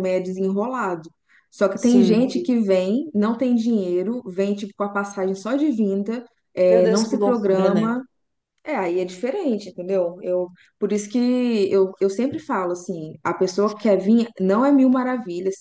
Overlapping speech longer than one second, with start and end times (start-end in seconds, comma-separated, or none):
6.7-8.0